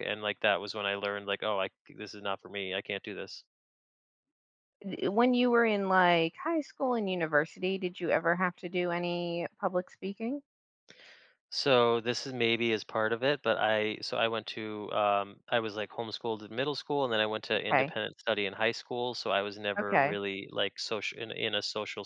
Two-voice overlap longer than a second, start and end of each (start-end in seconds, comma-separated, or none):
none